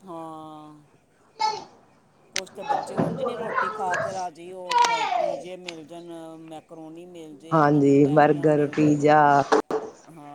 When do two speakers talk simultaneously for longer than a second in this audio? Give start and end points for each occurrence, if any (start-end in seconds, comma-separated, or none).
7.5-9.1